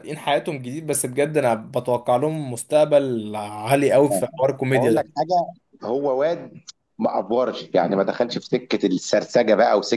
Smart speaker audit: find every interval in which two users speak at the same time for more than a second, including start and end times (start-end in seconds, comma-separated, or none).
none